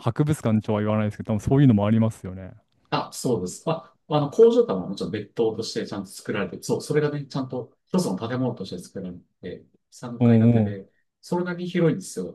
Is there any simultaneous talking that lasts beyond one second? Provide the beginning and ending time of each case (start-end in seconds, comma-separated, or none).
none